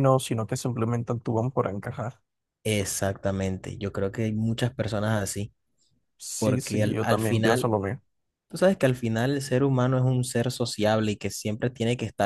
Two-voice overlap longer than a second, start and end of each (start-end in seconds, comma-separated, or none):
6.4-7.7